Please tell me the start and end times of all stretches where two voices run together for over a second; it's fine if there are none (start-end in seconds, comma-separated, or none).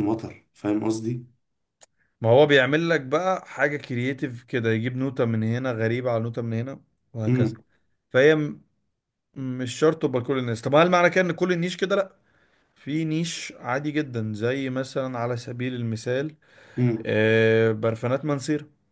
none